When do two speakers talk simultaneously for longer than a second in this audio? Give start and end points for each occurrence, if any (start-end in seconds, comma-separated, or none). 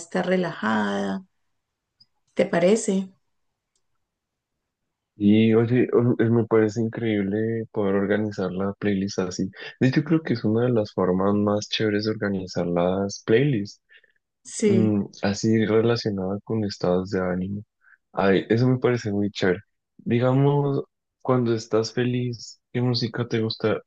none